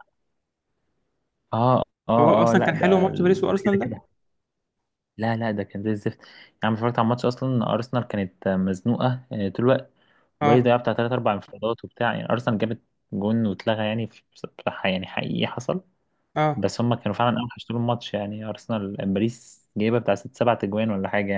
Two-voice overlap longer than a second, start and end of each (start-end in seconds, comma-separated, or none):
2.2-3.9